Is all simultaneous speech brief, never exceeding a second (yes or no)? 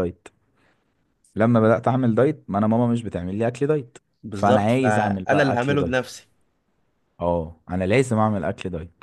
no